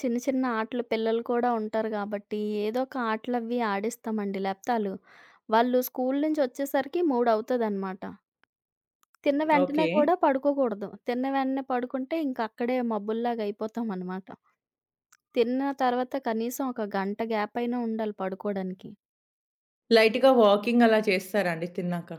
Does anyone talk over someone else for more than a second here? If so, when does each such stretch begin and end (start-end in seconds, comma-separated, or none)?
none